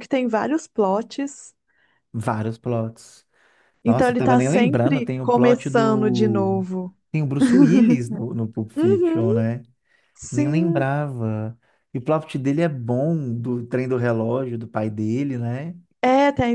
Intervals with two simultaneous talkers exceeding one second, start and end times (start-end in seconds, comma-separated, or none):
3.9-6.6